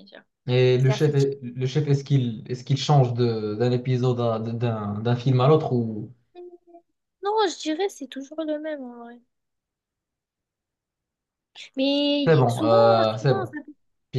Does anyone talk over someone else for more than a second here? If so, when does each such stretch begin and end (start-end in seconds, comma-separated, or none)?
12.3-13.6